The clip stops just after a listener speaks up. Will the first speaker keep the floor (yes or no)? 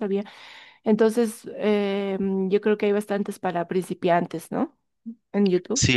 no